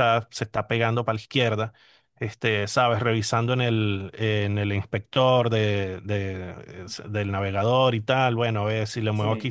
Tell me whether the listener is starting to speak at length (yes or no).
no